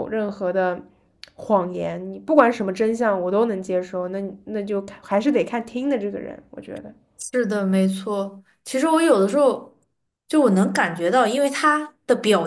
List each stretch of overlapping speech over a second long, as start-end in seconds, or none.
none